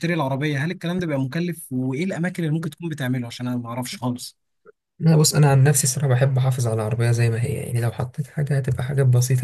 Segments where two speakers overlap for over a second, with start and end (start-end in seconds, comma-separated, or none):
none